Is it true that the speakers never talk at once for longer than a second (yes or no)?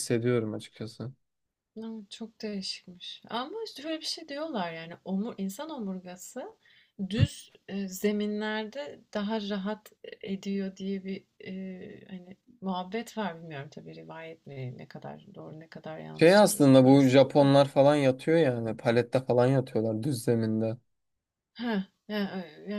no